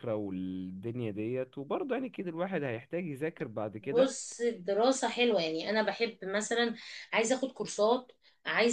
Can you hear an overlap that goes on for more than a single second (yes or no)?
no